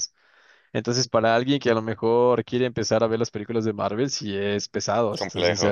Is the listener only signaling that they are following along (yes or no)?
no